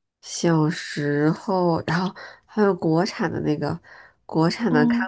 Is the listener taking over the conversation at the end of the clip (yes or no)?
no